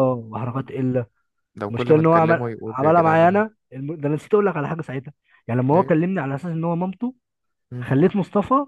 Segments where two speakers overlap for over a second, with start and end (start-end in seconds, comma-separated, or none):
1.7-3.4